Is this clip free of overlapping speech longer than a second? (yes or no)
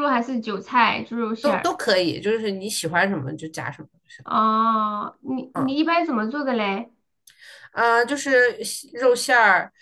yes